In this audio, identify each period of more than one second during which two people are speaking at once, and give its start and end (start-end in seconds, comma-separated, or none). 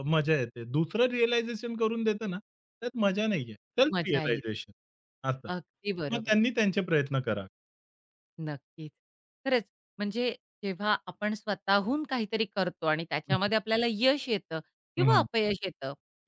none